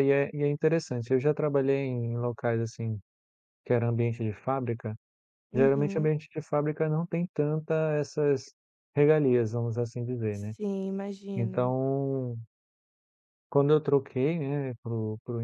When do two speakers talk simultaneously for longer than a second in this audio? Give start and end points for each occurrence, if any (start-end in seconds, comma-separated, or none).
none